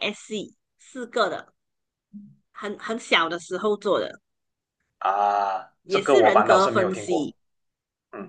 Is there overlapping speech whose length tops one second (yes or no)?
yes